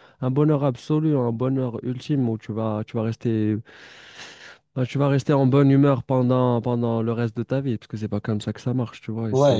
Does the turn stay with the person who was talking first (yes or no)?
no